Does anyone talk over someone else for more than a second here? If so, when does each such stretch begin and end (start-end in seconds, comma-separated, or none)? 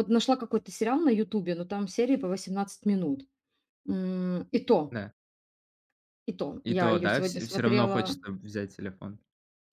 6.7-8.2